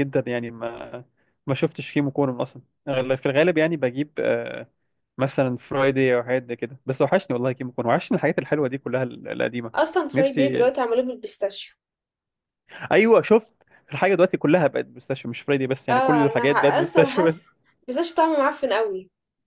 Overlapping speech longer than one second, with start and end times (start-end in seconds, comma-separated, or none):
15.9-17.4